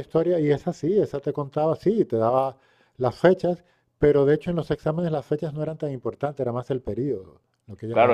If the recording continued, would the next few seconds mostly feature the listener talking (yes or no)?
yes